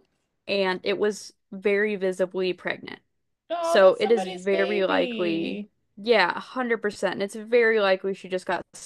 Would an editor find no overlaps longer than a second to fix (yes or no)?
no